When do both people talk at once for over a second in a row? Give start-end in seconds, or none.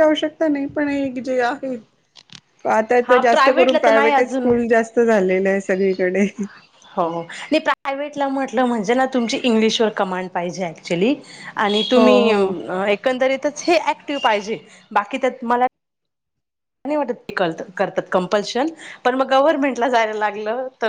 3.1-4.5